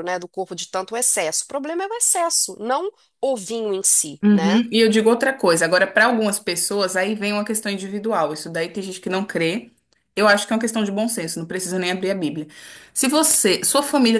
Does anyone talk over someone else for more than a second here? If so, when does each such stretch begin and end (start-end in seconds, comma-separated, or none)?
none